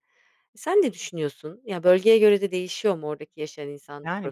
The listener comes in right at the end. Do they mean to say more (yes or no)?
yes